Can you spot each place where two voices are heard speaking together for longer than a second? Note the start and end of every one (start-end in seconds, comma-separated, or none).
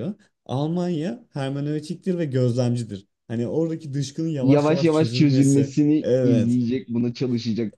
4.4-6.6